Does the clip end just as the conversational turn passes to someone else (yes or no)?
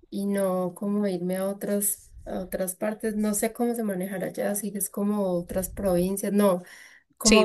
no